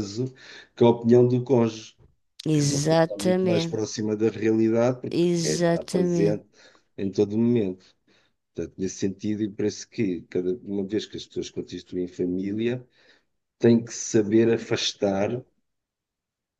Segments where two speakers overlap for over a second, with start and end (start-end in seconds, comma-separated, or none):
2.5-3.8, 5.1-6.4